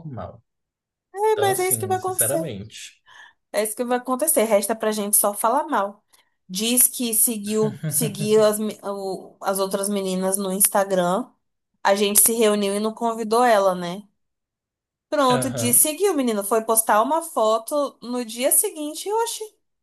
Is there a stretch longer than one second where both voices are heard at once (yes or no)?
yes